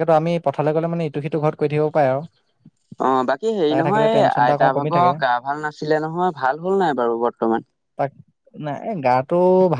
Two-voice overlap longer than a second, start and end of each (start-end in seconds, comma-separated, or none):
none